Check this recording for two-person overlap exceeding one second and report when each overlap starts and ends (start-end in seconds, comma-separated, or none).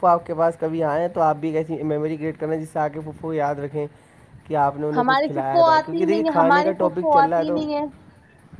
5.0-7.6